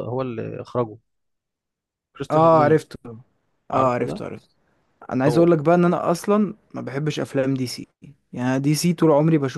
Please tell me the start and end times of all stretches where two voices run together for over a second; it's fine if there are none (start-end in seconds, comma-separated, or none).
none